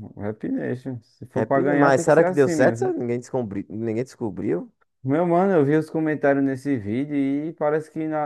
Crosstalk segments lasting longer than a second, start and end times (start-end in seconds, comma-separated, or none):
1.3-3.0